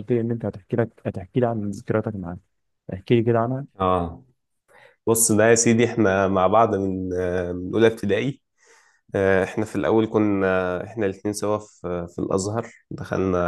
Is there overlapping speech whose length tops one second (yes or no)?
no